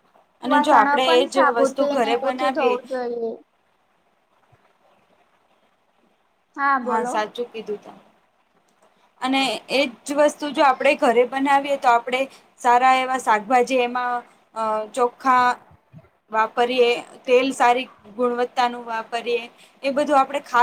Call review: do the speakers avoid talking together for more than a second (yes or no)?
no